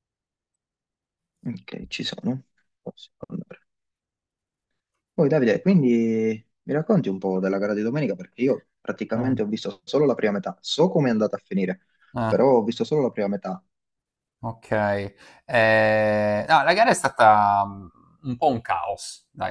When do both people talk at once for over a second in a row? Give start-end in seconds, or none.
none